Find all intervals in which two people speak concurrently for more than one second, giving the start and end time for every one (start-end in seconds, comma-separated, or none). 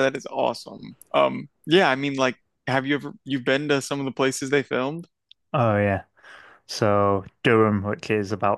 none